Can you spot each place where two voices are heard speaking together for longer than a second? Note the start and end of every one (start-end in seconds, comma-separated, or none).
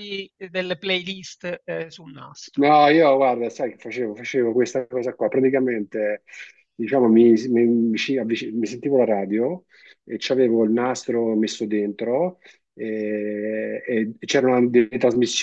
none